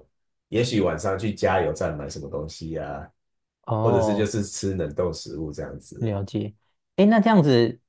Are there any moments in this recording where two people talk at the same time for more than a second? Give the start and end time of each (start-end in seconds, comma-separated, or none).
none